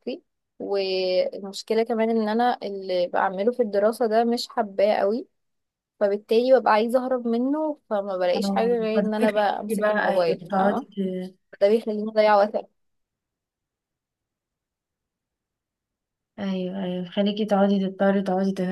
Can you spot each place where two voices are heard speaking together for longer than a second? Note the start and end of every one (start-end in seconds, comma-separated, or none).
8.3-10.8